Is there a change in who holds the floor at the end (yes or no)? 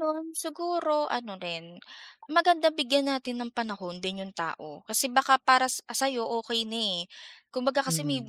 no